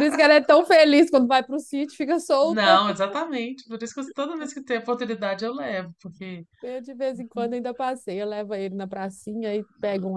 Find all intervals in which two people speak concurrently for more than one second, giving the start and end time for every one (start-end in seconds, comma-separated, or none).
none